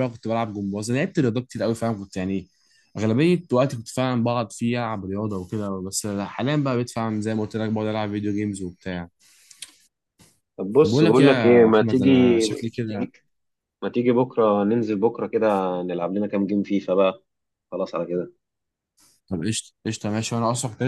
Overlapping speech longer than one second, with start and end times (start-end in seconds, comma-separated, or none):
10.8-12.1